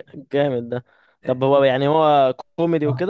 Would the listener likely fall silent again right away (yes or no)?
no